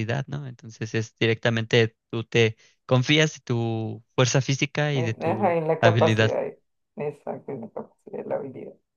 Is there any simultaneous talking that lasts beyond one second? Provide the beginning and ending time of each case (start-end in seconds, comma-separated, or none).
4.9-6.3